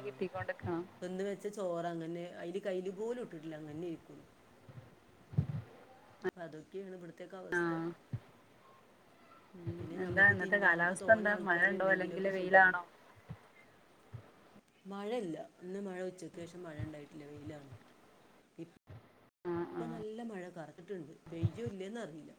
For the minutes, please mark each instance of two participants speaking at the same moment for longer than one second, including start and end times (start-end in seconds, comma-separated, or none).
9.8-12.8